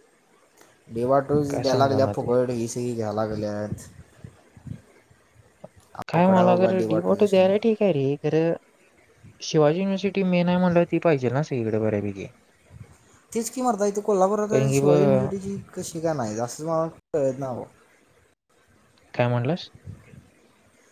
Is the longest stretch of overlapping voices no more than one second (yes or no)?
no